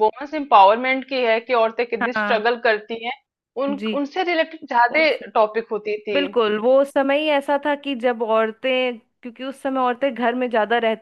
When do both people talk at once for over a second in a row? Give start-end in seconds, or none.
none